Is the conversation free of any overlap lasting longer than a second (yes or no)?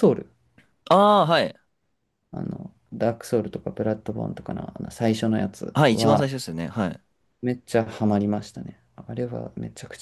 yes